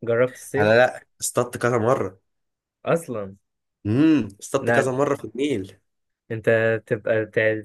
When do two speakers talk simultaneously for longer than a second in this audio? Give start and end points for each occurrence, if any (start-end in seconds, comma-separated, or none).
none